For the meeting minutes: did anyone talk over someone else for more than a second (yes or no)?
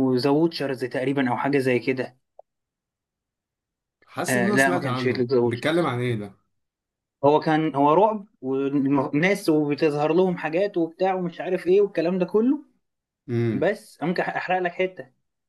yes